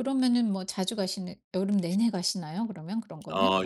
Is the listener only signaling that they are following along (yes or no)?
no